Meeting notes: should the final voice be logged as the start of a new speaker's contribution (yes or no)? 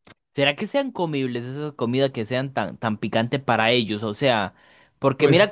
no